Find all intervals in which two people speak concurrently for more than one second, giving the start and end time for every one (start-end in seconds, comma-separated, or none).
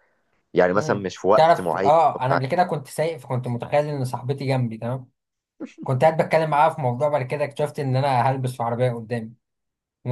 0.7-2.4